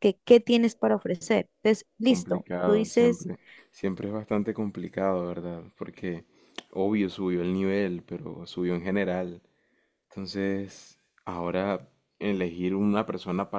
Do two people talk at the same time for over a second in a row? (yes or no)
yes